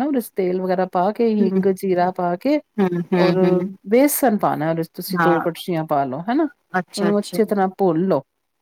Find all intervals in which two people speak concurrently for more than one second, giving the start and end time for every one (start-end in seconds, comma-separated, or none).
none